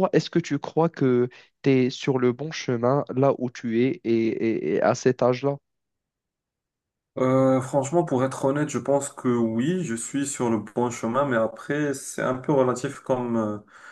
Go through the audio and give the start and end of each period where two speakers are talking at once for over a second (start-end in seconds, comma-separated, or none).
none